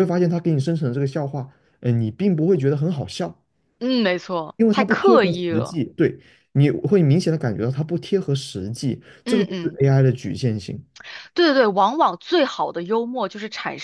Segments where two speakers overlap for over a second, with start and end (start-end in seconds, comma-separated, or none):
4.5-5.8